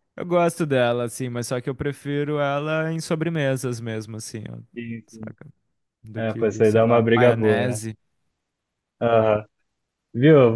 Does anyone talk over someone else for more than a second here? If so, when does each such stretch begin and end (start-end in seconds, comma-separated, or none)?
6.2-7.8